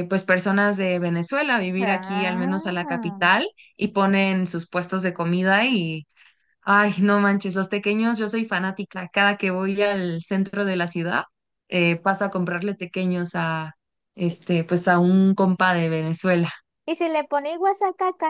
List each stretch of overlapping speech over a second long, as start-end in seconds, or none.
1.8-3.2